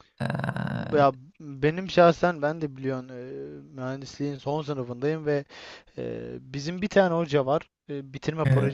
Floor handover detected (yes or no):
no